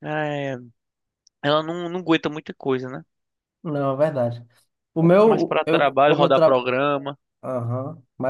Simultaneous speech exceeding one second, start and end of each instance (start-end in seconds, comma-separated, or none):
5.0-6.7